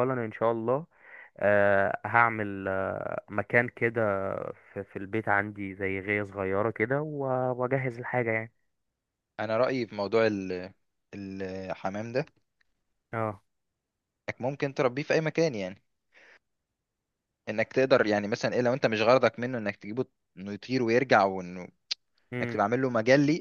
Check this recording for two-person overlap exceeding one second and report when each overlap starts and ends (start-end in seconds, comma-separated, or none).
none